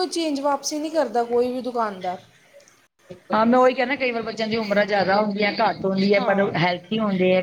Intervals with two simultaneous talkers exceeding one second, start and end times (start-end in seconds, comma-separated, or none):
none